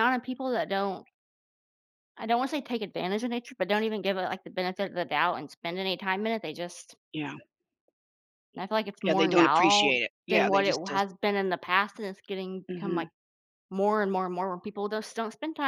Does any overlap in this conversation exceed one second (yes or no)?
yes